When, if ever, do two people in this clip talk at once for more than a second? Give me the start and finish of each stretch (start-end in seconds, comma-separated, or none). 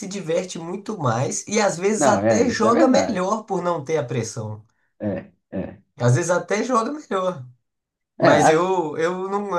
2.0-3.4